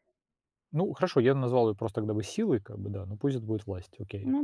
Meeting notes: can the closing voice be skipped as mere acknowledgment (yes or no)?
no